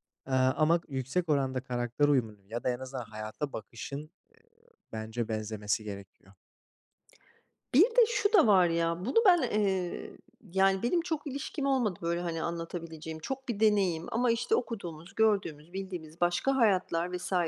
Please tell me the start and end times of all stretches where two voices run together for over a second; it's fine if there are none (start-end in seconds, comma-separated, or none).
none